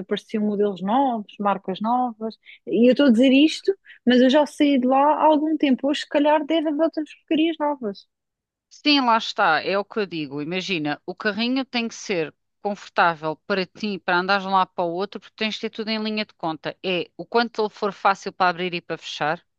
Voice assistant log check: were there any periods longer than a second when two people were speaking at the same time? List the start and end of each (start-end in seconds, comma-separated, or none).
none